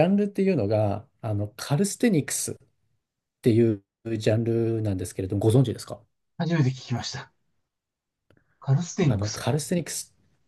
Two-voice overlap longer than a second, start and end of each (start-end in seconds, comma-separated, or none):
none